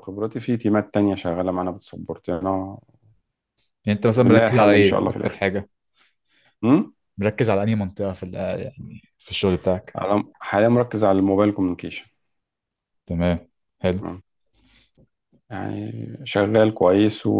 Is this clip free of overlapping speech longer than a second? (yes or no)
no